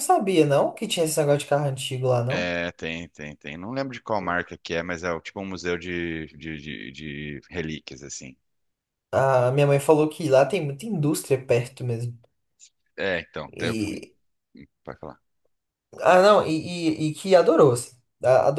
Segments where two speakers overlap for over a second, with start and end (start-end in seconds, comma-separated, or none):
none